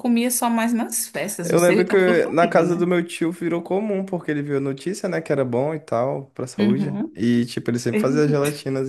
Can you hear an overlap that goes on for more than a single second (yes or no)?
yes